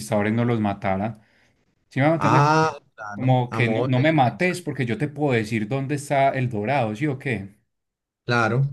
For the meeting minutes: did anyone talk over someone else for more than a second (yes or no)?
yes